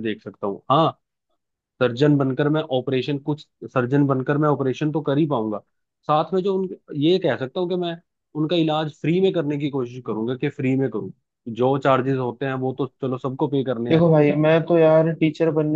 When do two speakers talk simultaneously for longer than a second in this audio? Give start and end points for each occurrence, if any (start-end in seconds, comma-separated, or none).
none